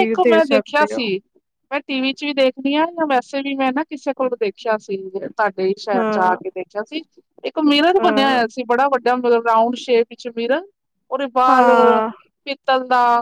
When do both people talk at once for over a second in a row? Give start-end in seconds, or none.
none